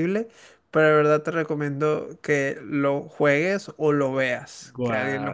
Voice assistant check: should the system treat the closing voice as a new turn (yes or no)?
yes